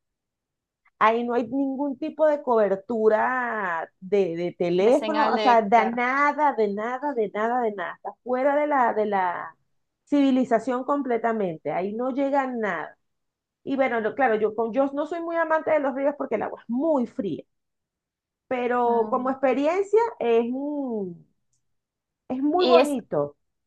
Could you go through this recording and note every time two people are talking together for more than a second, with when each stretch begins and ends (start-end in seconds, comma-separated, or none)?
4.8-6.0